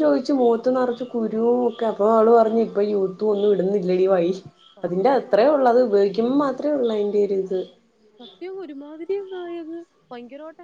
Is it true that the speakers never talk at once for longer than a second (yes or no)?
yes